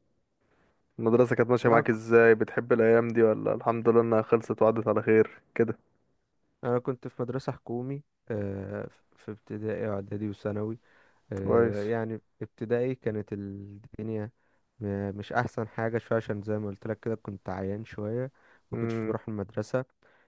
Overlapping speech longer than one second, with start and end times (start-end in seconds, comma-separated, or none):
none